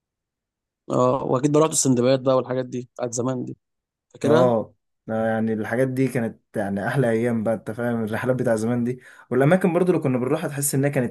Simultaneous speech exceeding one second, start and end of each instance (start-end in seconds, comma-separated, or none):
none